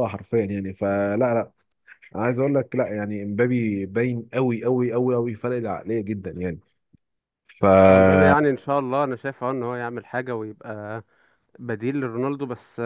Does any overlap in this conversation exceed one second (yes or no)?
no